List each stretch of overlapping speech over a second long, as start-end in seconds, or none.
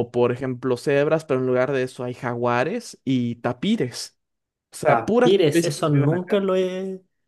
4.8-6.4